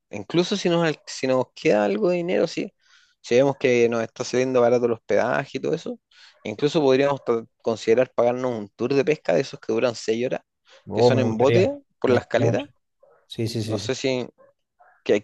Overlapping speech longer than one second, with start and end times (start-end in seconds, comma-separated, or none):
10.9-12.7